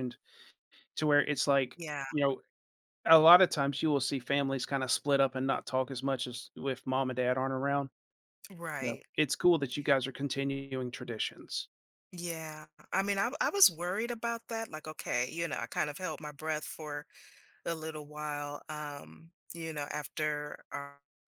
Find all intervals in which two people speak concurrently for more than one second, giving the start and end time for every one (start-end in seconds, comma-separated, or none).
none